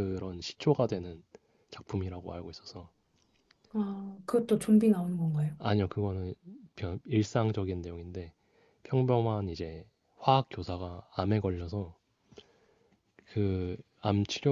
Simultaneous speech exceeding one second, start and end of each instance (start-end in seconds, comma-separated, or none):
none